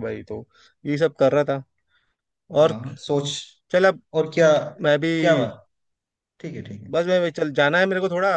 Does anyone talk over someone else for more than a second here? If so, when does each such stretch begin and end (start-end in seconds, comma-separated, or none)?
none